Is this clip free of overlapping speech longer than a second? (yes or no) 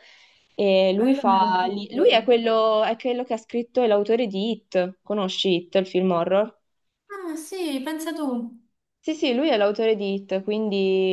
no